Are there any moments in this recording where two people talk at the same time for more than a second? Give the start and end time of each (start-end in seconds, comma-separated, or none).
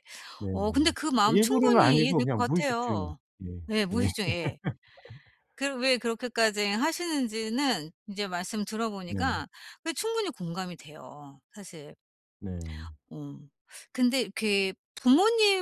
0.5-3.0